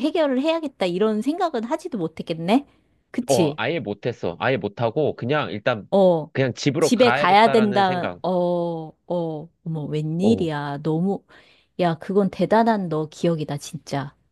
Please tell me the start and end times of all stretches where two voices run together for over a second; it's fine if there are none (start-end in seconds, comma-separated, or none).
6.8-8.2